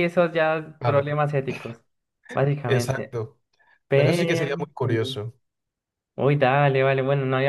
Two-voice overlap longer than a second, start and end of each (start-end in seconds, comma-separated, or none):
3.9-5.2